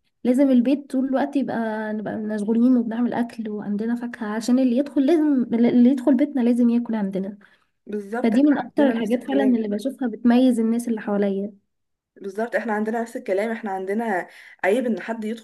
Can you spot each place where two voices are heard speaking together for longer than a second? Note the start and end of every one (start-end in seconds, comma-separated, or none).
8.2-9.6